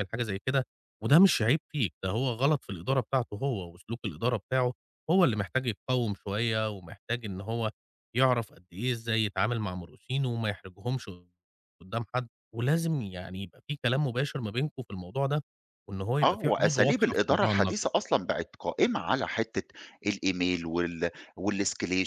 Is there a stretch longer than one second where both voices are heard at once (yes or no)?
yes